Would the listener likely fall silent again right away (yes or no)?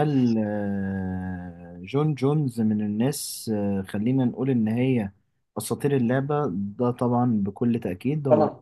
yes